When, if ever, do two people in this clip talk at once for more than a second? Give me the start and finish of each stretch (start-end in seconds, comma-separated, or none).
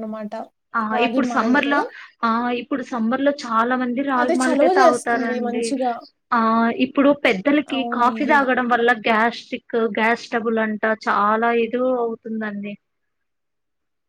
4.2-5.7